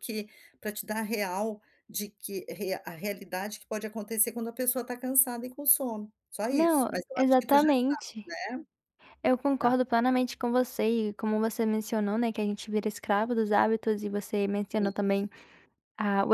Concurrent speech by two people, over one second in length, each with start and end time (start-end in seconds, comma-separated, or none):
6.5-8.2